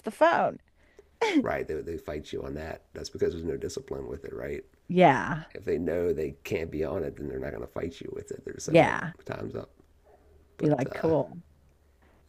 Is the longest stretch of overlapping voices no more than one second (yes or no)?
yes